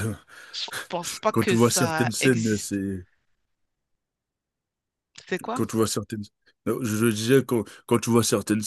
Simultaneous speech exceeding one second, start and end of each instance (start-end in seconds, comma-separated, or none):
1.3-2.8